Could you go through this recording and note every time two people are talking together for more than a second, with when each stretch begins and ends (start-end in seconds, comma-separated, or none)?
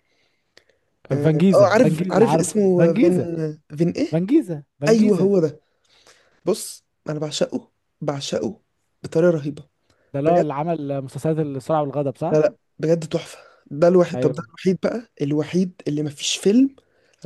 1.2-3.2